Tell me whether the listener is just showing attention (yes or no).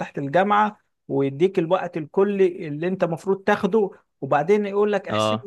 yes